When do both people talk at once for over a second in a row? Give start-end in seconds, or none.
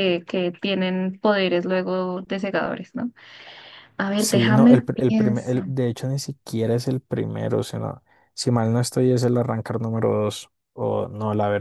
4.2-5.6